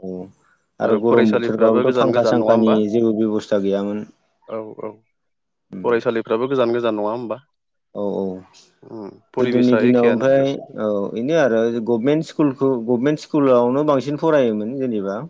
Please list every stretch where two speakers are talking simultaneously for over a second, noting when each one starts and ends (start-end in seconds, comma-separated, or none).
1.1-2.8, 9.4-10.7